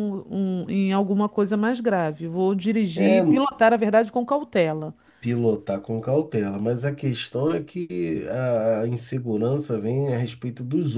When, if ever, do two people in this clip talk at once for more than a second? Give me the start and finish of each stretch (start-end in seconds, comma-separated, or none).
none